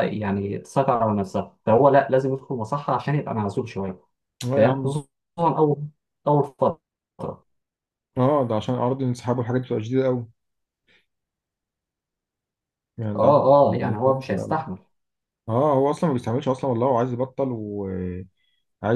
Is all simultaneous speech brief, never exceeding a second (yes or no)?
no